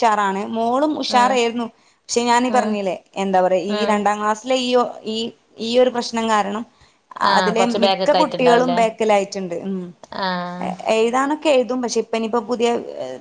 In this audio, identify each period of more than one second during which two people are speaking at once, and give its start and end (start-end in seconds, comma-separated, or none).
7.4-8.8